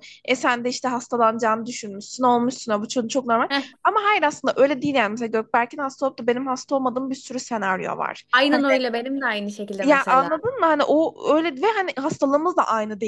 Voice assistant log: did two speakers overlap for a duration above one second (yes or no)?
no